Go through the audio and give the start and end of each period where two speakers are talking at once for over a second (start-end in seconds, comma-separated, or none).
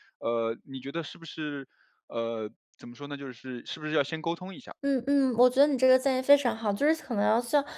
none